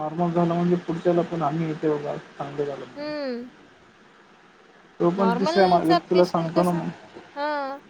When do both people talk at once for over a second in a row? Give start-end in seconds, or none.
5.2-6.8